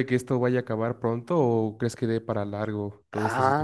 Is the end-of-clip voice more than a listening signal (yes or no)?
yes